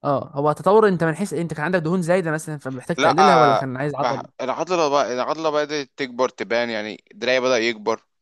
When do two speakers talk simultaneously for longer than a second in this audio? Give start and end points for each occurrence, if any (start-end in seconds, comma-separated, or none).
3.0-4.3